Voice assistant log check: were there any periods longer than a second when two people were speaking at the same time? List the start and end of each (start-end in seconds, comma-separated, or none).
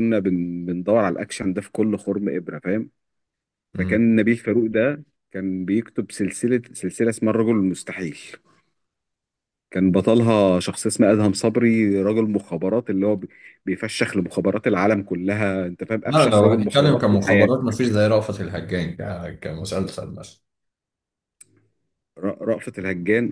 16.0-17.5